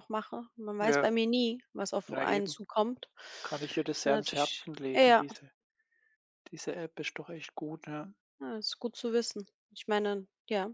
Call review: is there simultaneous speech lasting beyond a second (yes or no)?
yes